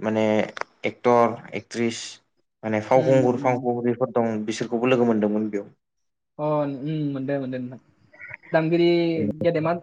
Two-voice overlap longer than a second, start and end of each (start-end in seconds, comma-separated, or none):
none